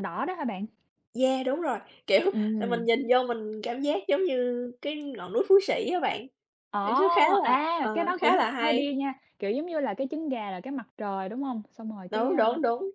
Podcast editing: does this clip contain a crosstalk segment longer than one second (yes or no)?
yes